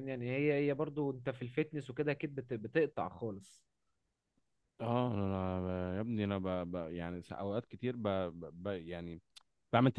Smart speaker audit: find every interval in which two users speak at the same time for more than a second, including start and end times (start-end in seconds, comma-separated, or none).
none